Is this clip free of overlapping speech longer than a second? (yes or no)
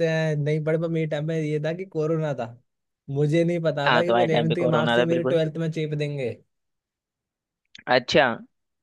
no